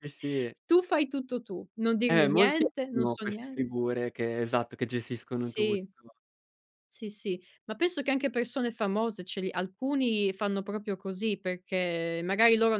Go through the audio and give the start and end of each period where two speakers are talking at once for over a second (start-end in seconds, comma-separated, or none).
2.1-3.6